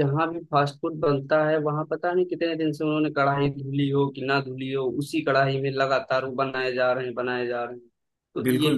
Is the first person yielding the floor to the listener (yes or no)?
yes